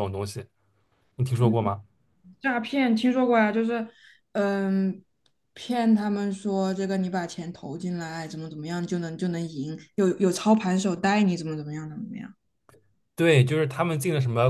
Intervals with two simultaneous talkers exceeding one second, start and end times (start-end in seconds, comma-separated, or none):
none